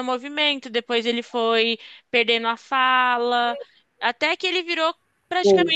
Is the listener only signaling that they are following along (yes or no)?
yes